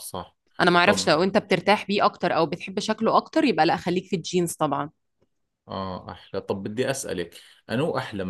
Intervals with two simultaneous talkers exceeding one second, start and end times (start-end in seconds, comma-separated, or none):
none